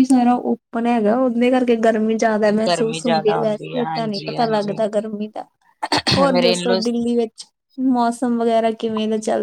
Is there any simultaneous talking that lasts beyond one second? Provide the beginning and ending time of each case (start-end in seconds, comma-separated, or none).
2.7-4.8